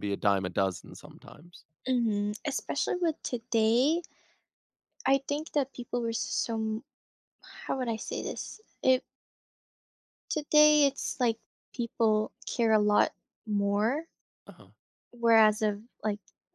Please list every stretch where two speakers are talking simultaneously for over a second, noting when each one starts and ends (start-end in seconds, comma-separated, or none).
none